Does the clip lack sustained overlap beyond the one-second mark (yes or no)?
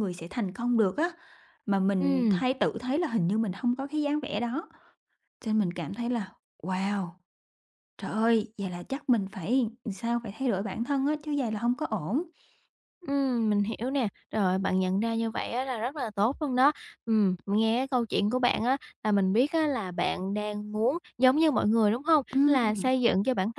yes